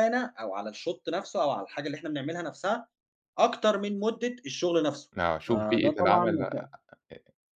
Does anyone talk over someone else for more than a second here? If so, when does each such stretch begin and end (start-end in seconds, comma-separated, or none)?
5.5-6.7